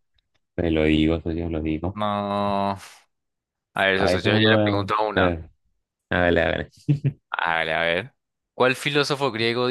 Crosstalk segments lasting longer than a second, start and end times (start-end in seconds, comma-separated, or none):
4.0-5.4